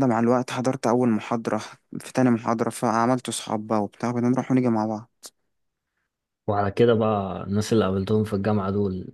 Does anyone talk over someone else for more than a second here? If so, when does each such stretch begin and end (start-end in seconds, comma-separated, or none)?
none